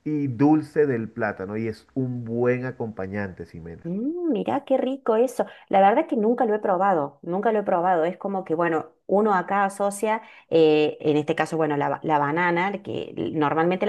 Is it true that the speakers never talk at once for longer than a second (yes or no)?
yes